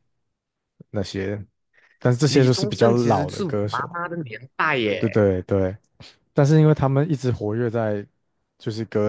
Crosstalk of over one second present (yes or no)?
yes